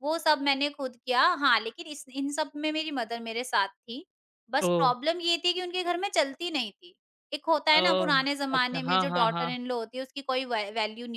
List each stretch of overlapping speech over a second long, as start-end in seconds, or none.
7.8-9.6